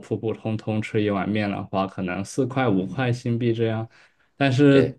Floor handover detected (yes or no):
no